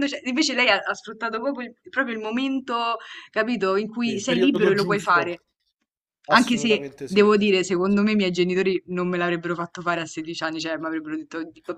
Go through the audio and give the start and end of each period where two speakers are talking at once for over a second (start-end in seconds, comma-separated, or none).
4.0-5.3, 6.3-8.1